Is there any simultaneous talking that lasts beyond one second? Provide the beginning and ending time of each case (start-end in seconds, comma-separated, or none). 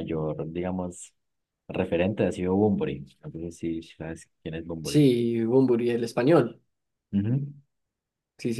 none